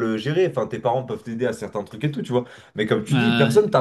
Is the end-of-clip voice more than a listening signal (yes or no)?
no